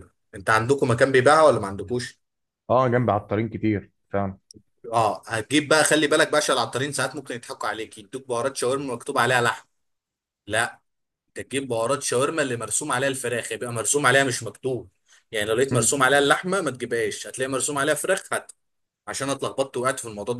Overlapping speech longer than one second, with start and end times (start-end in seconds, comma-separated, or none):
none